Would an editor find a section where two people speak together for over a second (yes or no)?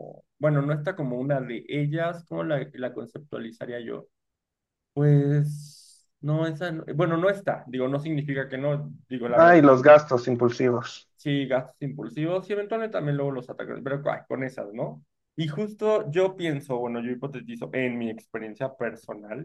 no